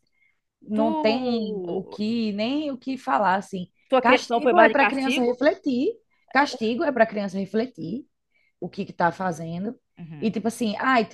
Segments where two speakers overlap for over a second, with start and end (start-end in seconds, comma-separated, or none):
3.9-5.4